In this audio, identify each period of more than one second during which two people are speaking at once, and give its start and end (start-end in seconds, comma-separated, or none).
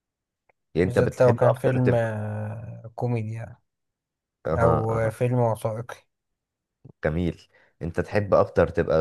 0.8-2.1